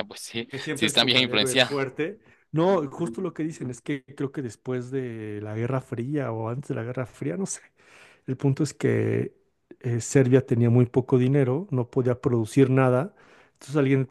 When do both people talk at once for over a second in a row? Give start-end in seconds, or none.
0.5-1.8